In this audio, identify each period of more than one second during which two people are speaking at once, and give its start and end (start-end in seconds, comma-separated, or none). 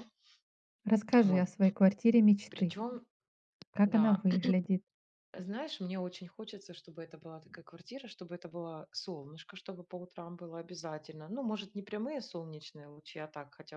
none